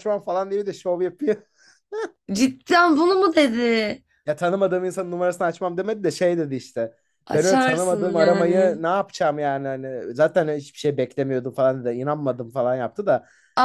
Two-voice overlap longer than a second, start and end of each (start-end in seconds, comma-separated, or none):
7.3-8.8